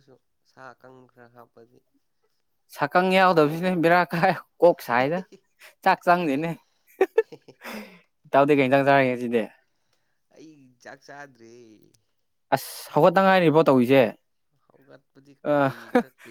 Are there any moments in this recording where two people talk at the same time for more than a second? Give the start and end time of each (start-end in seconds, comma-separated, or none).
none